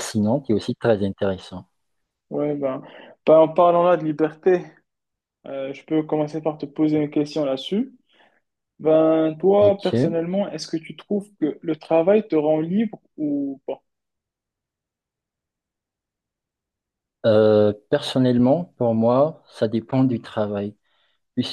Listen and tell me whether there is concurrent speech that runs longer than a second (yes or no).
no